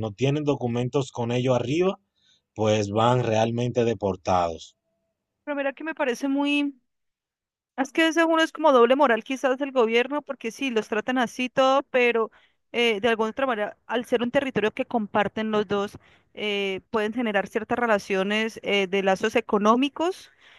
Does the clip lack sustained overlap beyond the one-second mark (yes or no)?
yes